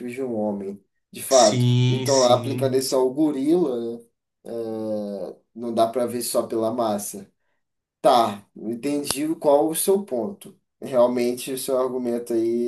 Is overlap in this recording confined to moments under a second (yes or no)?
no